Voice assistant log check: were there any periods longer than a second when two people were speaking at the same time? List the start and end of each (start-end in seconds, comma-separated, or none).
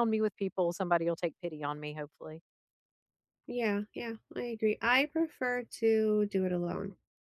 none